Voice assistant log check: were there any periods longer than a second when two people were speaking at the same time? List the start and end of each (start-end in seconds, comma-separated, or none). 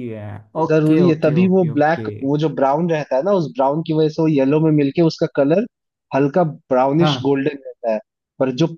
0.7-2.1